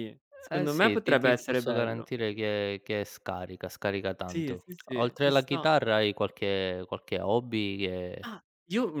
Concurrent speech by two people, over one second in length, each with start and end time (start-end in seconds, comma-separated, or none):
0.5-2.1, 4.3-5.7